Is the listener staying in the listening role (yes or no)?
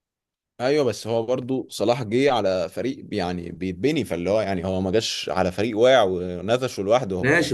no